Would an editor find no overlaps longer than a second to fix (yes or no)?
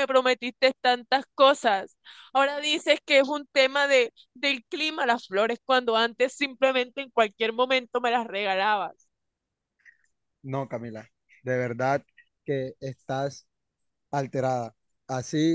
yes